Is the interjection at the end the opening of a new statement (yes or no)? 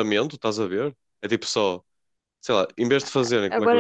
yes